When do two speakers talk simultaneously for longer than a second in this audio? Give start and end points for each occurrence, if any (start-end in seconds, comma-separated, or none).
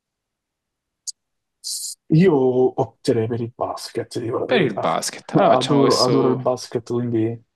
4.5-6.4